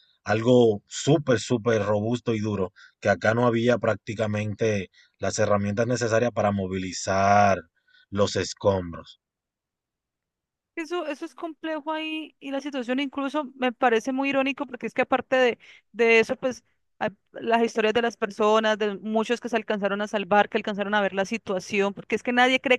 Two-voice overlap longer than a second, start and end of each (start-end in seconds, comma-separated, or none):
none